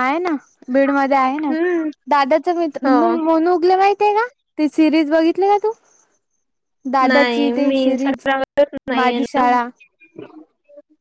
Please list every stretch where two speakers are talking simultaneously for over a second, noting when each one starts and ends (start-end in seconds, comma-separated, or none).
7.1-8.3